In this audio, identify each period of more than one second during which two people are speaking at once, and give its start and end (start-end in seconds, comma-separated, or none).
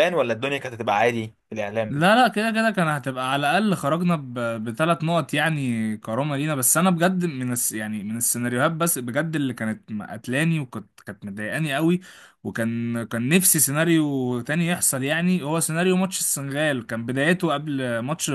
none